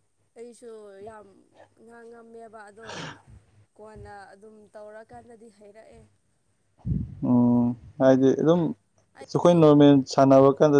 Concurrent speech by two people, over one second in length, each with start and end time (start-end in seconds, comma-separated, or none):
none